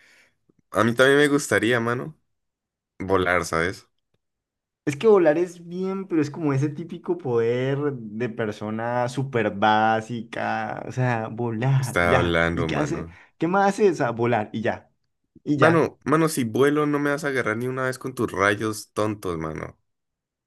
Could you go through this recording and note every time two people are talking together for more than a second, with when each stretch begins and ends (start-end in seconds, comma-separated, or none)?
11.8-13.2